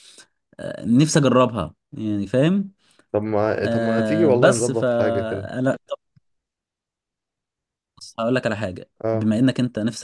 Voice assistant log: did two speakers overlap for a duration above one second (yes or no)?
yes